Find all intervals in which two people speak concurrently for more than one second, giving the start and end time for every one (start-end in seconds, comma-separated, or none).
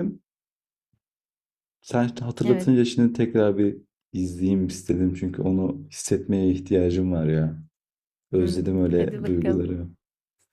8.4-9.6